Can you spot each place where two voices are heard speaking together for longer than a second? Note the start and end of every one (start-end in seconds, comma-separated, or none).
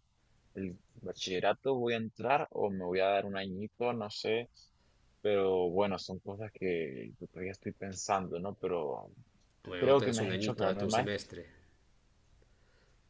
9.8-11.1